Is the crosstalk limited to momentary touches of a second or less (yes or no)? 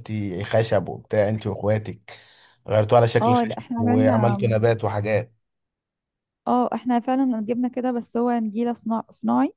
no